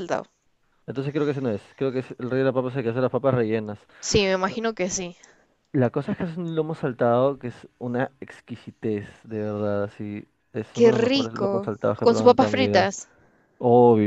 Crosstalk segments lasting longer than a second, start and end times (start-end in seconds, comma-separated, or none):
10.7-12.9